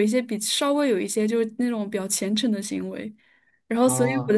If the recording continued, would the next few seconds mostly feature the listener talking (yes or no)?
no